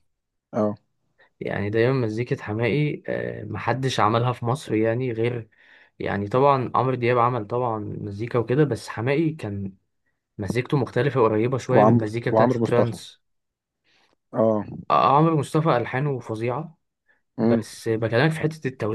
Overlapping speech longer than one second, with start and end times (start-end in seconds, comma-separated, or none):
11.7-13.0